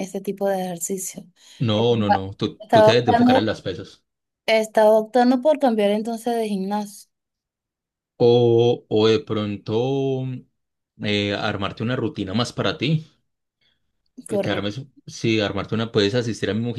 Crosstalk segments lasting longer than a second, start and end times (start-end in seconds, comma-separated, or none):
1.7-3.5